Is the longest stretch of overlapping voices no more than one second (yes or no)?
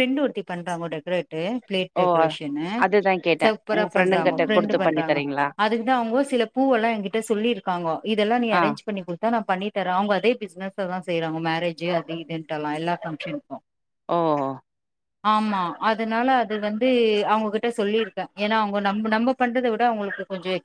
no